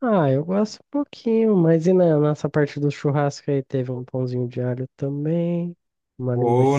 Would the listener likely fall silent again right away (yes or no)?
no